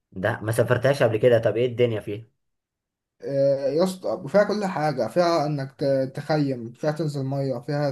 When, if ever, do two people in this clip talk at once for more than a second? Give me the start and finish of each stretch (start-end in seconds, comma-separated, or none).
none